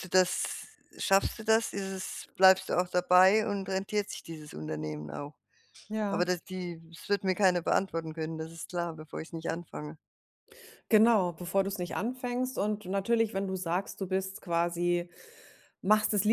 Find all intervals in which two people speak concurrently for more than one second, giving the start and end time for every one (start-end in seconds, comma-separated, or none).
none